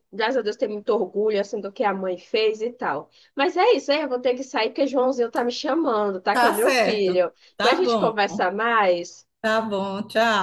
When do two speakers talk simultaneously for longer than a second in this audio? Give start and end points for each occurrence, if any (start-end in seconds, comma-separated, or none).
6.3-8.2